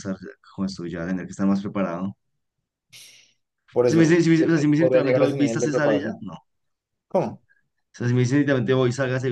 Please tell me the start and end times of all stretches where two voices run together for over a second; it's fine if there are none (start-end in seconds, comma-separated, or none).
3.9-6.3